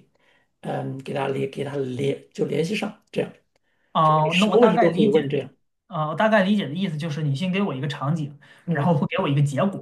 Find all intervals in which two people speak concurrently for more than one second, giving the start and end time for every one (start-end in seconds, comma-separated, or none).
4.0-5.4